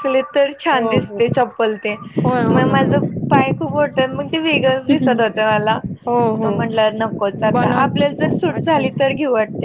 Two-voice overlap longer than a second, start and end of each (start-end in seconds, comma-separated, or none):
none